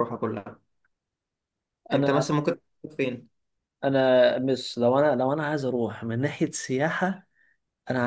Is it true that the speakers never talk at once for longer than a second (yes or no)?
yes